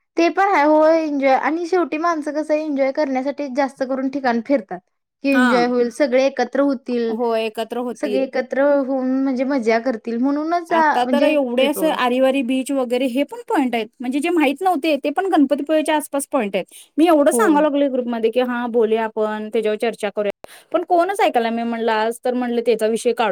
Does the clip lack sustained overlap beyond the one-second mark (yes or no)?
yes